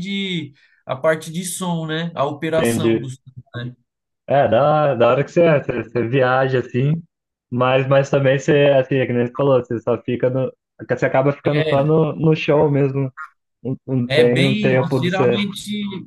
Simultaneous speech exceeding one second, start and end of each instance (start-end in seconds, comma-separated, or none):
14.1-15.4